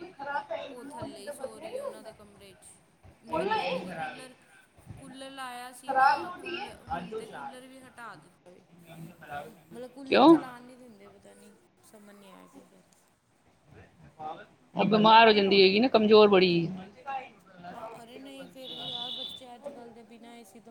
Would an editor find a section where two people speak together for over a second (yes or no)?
no